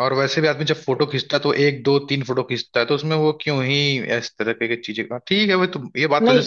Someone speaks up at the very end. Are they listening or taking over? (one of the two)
listening